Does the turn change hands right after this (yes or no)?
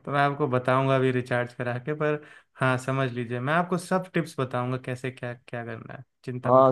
yes